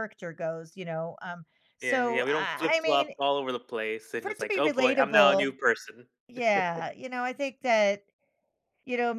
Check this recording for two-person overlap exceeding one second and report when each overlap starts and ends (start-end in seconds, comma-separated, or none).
1.8-3.1, 4.2-5.5